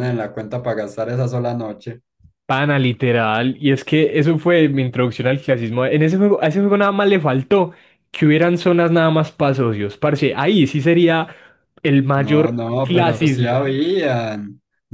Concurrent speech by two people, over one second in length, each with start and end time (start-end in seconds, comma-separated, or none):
12.2-13.7